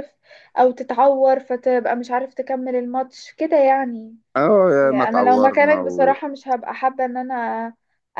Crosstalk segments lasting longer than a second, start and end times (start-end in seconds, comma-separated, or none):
4.8-6.1